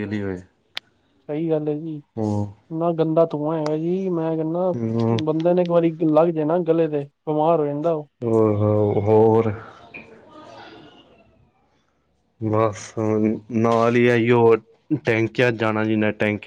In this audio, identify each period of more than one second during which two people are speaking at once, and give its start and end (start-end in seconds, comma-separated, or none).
none